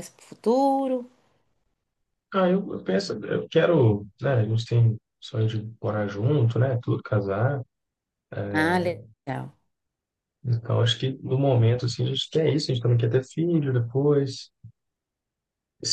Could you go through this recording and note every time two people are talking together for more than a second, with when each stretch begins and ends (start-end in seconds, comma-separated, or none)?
none